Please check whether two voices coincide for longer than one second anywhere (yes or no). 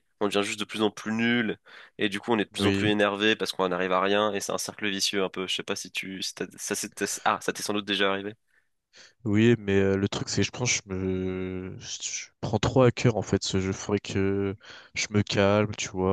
no